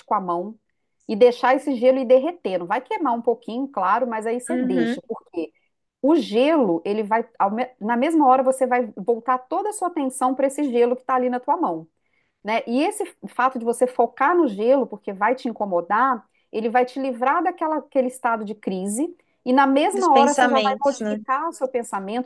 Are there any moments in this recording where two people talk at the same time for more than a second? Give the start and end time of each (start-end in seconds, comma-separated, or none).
19.9-21.2